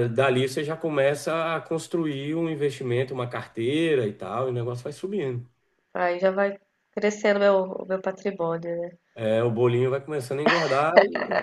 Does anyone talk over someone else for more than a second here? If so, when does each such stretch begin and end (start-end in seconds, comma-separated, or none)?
none